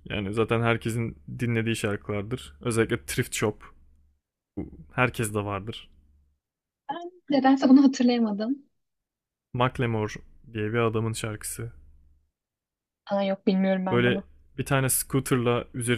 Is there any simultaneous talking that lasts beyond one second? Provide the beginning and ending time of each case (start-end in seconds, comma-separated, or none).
none